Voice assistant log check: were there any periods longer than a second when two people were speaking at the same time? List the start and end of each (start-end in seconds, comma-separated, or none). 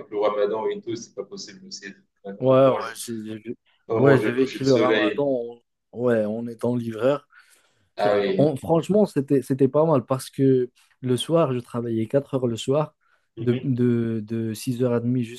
4.0-5.2